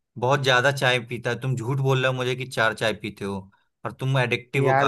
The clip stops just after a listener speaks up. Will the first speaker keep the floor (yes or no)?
no